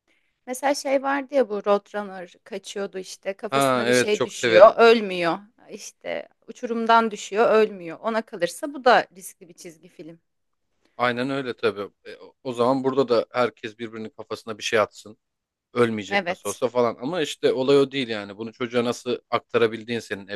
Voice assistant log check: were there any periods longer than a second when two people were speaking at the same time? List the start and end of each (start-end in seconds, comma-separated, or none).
3.5-4.7